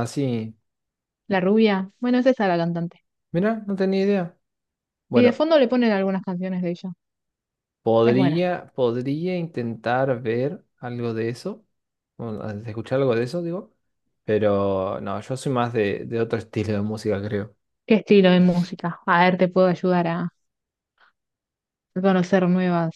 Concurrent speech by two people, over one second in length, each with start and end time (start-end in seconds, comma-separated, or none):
none